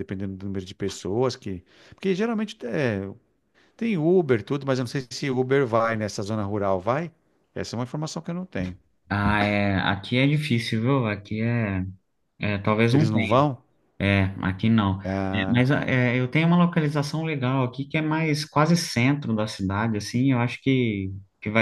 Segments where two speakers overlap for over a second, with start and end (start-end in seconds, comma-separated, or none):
none